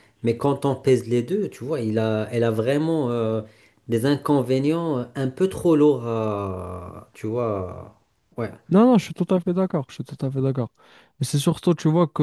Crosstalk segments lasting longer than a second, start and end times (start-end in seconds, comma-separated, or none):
none